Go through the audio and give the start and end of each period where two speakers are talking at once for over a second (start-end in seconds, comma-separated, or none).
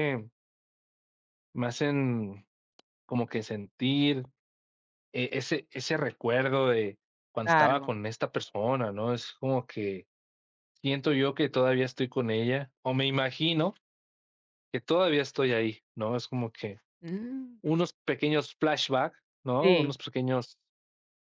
none